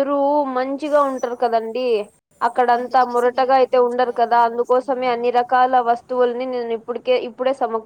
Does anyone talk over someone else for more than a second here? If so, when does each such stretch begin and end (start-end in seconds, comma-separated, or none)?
2.8-5.1